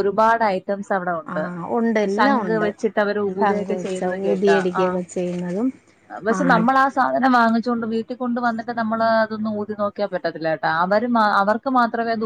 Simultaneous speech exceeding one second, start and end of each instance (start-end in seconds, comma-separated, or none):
3.4-5.0